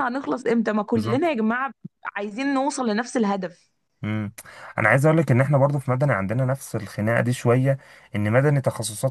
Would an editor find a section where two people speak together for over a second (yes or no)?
no